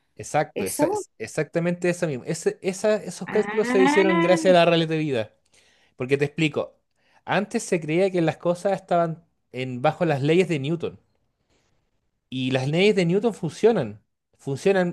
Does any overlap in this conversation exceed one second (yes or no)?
yes